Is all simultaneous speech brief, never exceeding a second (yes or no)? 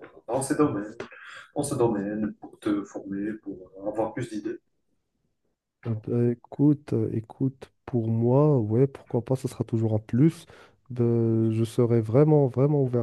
yes